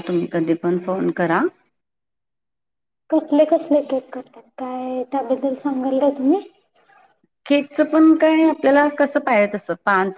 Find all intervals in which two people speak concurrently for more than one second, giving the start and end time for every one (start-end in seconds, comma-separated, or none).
none